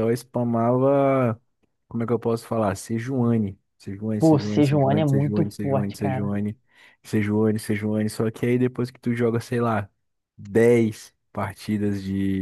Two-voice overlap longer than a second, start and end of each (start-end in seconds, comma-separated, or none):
4.2-6.3